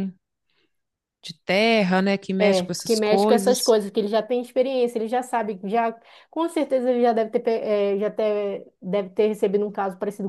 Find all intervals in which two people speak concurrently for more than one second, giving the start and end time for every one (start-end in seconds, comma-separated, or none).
2.4-3.7